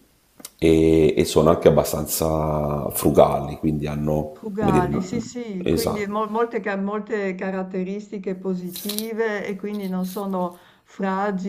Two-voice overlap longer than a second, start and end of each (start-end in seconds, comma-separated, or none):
none